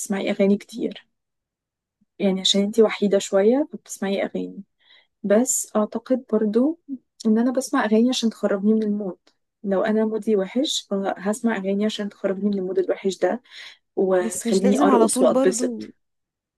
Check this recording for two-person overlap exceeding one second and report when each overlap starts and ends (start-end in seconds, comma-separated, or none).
14.2-15.9